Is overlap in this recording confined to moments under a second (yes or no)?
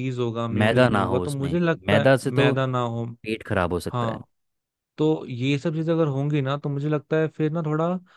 no